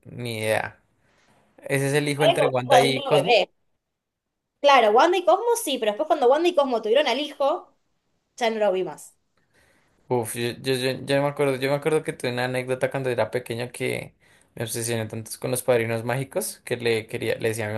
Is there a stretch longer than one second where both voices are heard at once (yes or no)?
yes